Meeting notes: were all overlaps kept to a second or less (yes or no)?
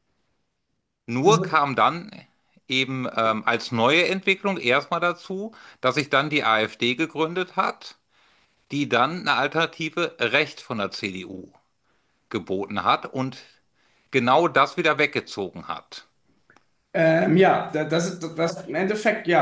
yes